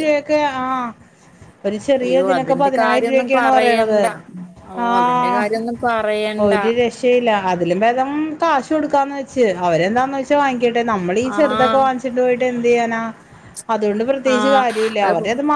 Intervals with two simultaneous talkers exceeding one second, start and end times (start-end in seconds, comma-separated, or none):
2.0-4.0